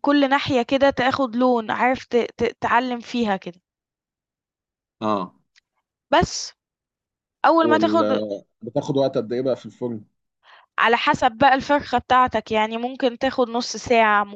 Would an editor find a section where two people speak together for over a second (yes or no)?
no